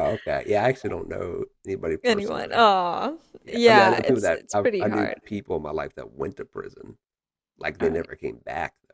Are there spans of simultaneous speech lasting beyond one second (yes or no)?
yes